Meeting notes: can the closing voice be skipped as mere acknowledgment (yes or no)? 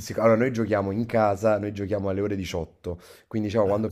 yes